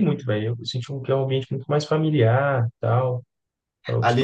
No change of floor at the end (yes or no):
yes